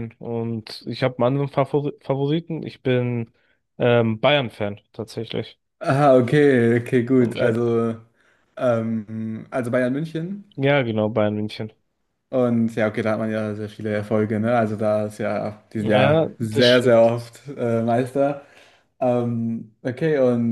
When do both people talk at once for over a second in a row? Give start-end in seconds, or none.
15.8-17.1